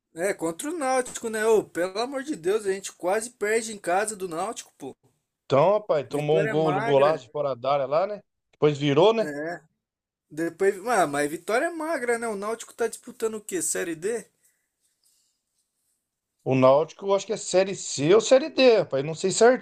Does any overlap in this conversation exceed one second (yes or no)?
yes